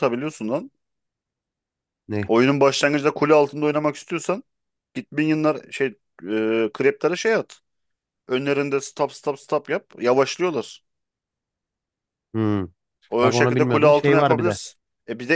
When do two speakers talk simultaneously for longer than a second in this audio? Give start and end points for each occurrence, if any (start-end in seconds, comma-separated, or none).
13.2-14.6